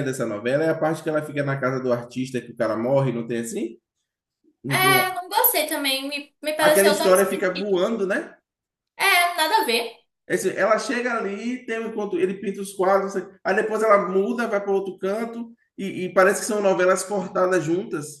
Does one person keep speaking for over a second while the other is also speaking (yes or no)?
yes